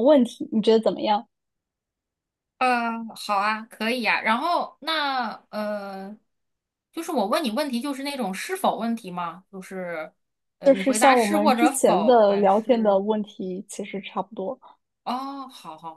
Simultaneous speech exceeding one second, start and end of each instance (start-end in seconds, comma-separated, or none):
10.6-13.0